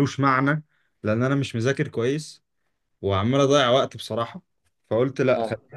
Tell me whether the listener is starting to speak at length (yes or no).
no